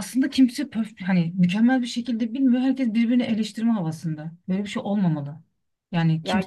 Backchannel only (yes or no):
no